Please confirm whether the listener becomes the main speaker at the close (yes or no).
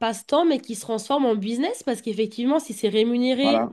no